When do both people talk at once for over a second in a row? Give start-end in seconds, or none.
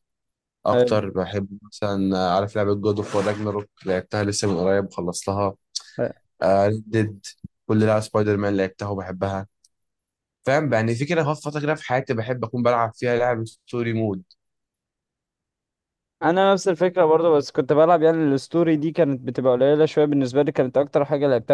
none